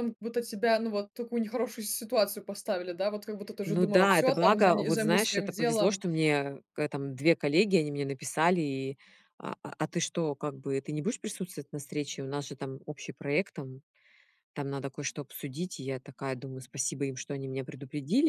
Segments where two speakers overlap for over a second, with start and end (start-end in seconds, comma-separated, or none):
3.7-6.0